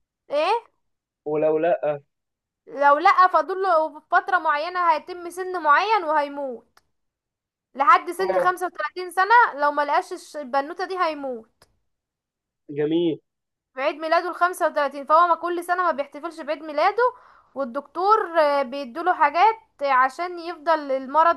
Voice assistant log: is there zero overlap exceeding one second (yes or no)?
yes